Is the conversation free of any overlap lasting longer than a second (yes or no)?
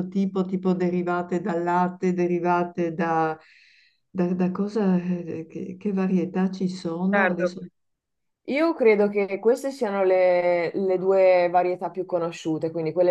yes